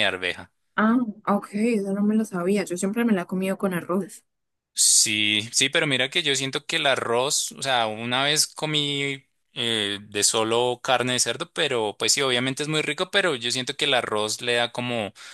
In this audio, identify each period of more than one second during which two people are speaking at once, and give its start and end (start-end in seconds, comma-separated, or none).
none